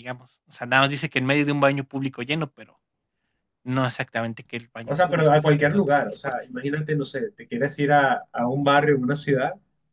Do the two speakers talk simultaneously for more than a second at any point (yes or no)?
yes